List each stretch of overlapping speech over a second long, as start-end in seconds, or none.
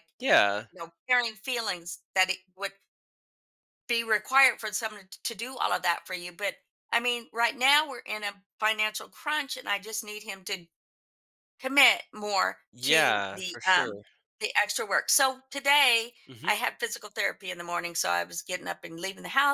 12.7-14.0